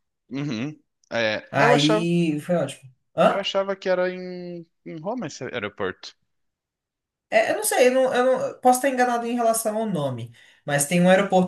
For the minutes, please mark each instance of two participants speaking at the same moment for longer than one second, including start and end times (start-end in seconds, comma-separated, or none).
none